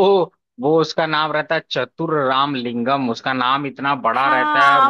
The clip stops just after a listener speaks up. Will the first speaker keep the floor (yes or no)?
no